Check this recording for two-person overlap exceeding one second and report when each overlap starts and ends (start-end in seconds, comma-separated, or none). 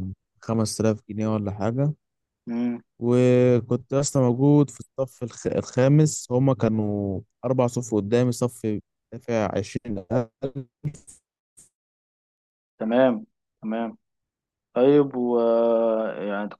none